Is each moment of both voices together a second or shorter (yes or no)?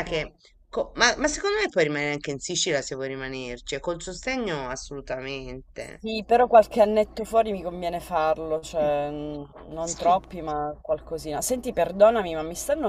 yes